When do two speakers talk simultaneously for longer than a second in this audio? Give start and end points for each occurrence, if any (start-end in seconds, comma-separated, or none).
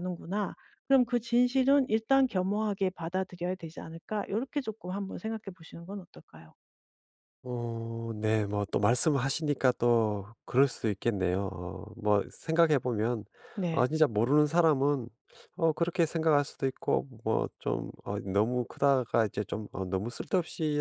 none